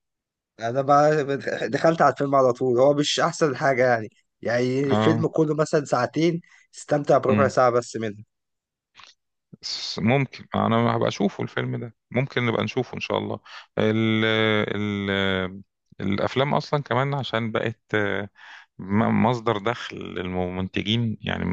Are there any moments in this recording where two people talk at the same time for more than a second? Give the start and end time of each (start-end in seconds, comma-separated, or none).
none